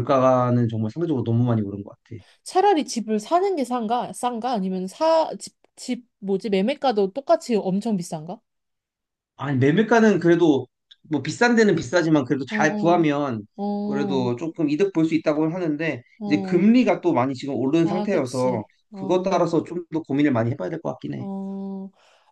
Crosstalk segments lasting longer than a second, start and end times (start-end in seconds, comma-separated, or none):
17.8-19.4